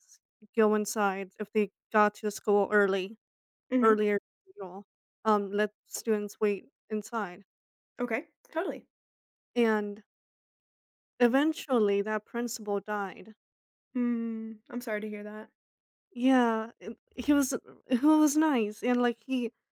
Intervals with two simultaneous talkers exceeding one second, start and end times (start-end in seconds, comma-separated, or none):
none